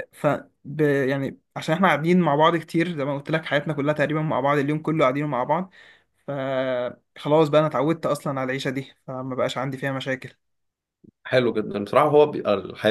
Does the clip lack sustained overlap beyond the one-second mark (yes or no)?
yes